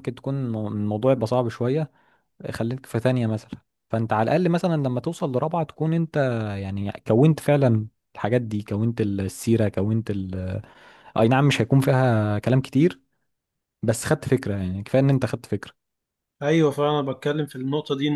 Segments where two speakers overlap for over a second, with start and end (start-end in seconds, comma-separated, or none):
none